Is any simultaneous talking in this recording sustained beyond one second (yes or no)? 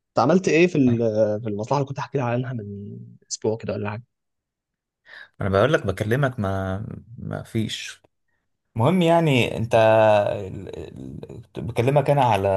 no